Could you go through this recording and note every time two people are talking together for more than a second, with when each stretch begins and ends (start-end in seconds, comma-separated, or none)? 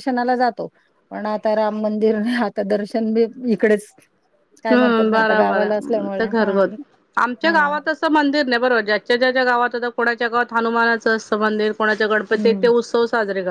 4.7-6.1